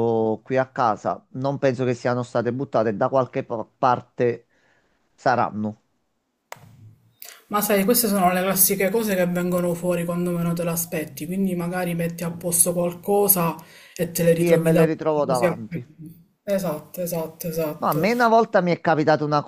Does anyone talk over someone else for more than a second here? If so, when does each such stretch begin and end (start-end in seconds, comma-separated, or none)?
14.3-15.6